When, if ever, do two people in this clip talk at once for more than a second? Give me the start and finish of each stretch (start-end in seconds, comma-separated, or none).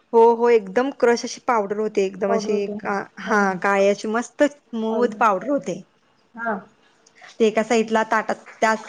none